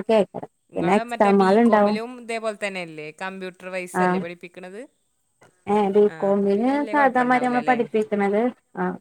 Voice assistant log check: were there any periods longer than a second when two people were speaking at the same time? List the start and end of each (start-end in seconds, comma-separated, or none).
6.1-7.8